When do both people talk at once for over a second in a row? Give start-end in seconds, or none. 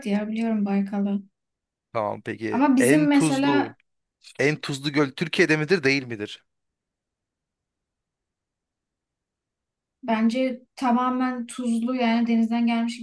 2.5-3.8